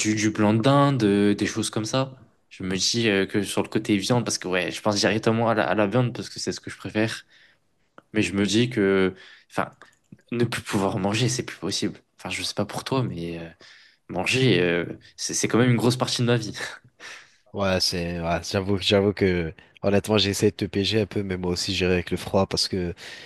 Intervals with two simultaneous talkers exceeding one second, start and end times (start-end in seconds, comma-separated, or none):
none